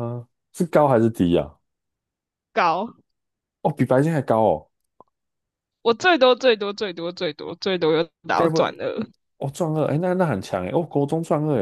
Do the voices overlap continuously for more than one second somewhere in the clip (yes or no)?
no